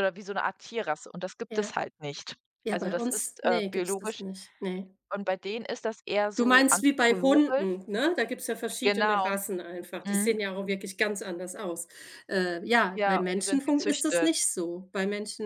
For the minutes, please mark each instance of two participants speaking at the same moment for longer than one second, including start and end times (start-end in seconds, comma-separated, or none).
2.6-4.2, 6.4-7.7, 12.9-14.3